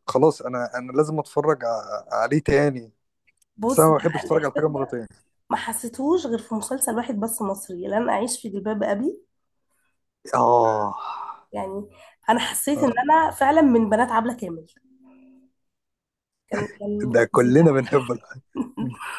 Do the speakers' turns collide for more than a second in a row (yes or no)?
yes